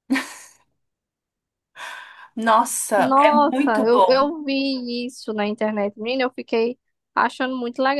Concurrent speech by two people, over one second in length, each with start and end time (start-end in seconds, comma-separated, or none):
3.0-4.3